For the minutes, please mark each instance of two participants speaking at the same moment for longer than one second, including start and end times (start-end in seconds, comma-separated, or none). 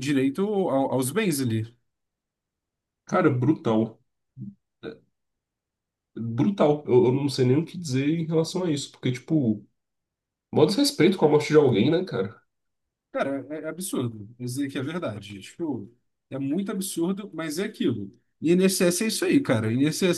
none